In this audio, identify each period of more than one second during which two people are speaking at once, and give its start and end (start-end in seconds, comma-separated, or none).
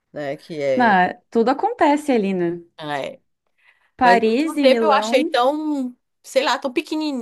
4.0-5.3